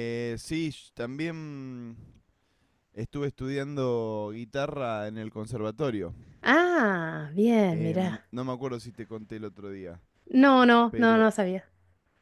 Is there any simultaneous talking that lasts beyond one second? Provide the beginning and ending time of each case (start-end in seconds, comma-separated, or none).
none